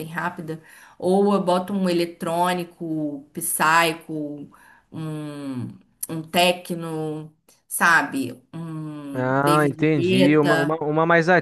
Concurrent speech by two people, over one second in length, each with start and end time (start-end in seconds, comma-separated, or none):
9.1-10.8